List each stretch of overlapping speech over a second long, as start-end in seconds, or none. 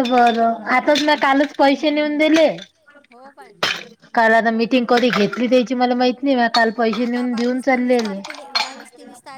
6.9-8.2